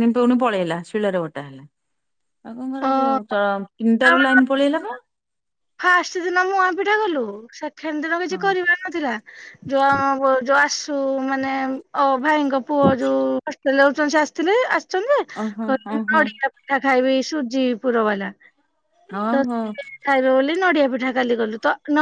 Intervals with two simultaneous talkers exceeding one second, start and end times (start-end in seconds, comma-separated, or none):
none